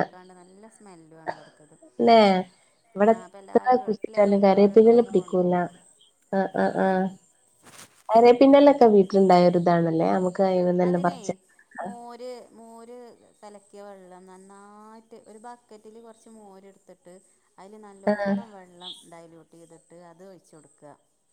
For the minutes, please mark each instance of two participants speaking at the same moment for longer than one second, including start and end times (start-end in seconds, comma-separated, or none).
3.1-5.5